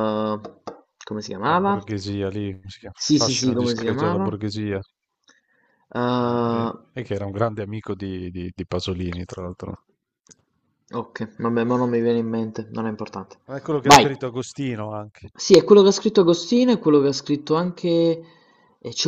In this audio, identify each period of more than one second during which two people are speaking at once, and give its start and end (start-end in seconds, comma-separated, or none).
3.0-4.3